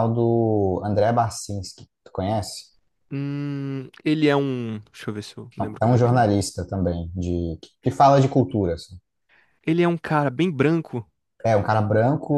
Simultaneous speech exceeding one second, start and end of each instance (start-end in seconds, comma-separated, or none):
none